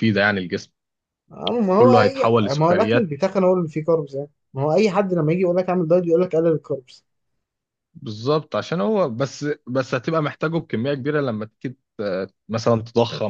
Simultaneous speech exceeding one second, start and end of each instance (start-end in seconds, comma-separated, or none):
1.7-3.1